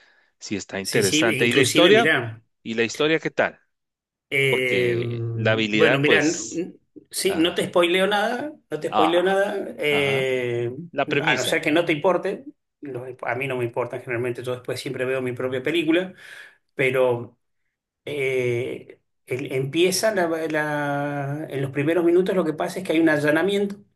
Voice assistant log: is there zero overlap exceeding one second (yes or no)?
no